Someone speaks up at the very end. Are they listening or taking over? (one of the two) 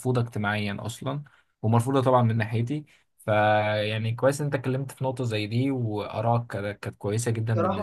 taking over